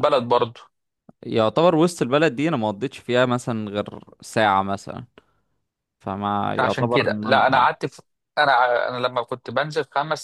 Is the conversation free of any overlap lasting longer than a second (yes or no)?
no